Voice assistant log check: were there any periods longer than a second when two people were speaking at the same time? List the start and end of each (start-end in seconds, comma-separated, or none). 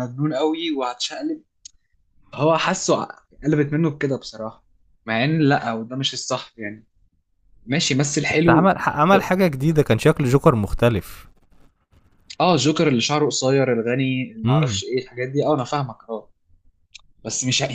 none